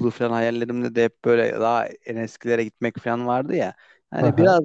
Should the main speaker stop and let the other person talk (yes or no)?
no